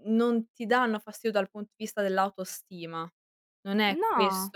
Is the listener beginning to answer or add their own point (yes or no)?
no